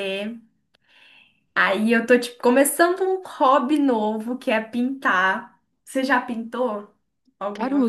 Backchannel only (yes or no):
no